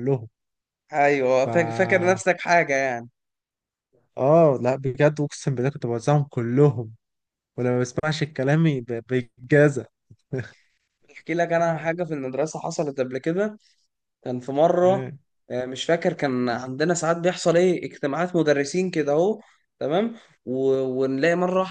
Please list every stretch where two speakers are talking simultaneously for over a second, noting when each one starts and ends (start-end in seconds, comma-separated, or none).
none